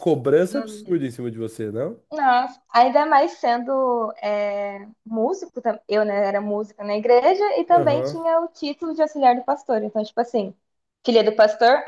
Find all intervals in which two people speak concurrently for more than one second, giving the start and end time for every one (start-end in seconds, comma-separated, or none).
none